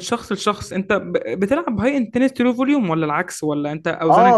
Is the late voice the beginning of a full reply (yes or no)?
yes